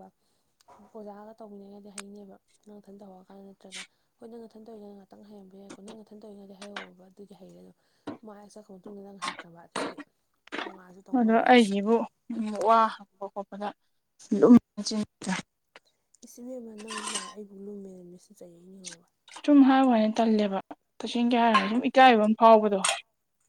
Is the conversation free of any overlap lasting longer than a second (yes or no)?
yes